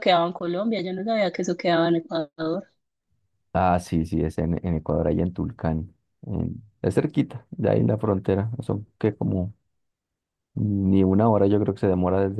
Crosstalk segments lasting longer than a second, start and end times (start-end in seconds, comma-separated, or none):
none